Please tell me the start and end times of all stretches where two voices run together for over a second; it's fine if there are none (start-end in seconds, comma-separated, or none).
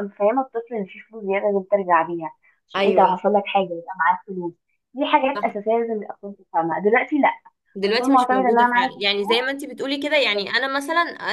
7.8-9.4